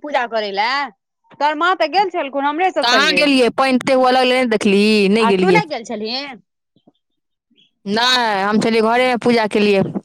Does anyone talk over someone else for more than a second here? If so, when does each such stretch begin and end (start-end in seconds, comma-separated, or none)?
none